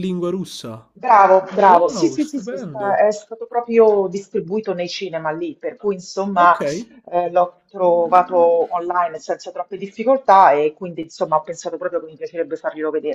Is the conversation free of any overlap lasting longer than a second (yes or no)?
no